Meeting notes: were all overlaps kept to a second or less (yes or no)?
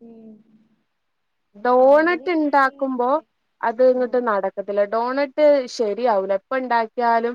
no